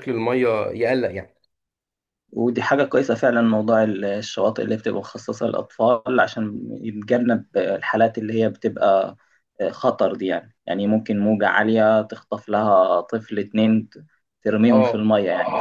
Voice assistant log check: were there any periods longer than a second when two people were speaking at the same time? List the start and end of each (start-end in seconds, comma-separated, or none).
none